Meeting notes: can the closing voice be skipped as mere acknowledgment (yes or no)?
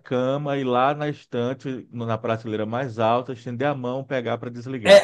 no